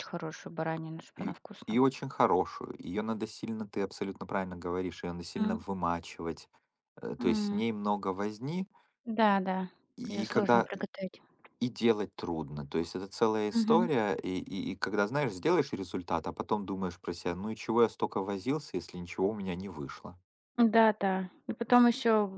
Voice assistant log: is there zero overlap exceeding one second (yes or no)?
yes